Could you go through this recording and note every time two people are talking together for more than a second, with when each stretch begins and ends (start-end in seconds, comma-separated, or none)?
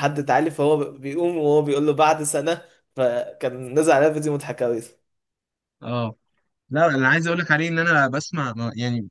none